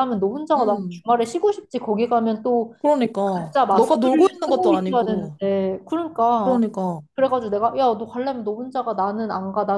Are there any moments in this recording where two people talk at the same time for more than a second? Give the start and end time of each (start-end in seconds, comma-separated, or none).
3.4-5.4